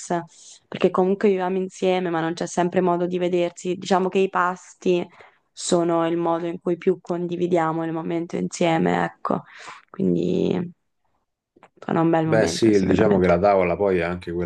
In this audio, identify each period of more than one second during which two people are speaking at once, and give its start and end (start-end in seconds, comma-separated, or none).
12.2-13.4